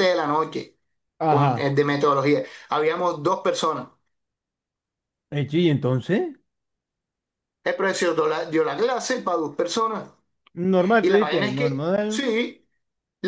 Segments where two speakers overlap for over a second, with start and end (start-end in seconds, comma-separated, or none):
11.0-12.3